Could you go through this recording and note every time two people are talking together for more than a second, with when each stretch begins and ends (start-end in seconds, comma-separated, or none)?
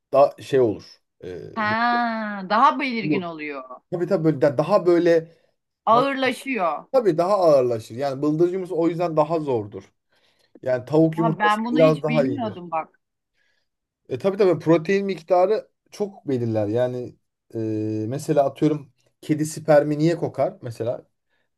11.2-12.6